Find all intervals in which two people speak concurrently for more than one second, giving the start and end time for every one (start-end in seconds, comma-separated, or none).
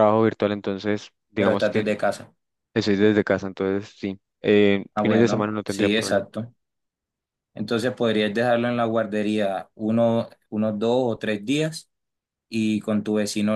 4.9-6.3